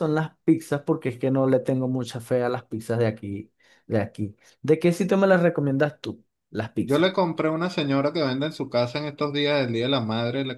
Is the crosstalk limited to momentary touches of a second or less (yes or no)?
yes